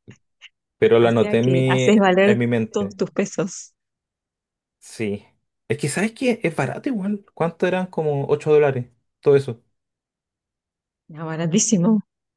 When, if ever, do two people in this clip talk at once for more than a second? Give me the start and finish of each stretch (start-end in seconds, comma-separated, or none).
1.0-3.0